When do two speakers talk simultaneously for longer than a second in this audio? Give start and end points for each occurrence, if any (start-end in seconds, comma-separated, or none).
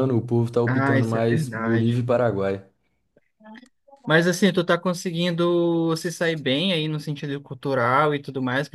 0.7-2.1